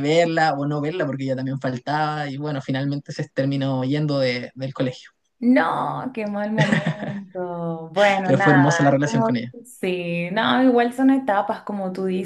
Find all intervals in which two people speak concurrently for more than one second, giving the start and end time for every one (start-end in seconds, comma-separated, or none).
8.2-9.5